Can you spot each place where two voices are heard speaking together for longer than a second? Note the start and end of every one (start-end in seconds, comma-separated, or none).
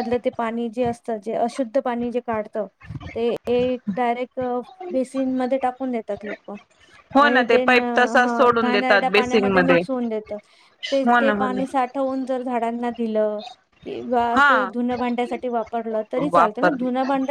7.2-9.8